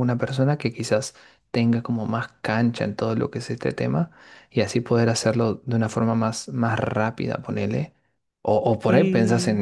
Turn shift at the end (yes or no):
no